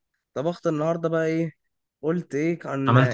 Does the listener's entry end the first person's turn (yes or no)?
no